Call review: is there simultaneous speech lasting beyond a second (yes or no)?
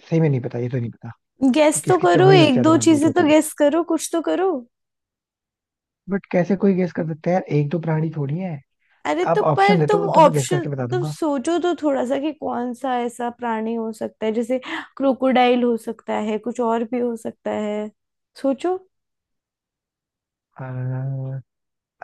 yes